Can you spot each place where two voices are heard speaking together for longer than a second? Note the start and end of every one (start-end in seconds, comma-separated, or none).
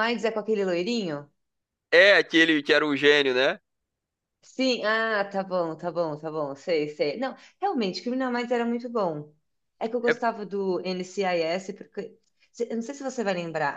none